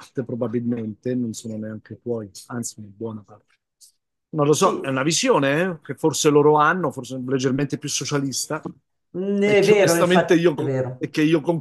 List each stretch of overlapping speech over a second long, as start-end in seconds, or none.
9.4-11.1